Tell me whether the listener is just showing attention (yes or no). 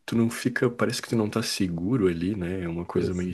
yes